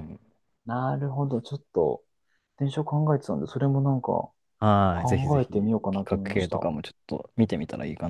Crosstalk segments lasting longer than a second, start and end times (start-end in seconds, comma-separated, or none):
4.9-6.7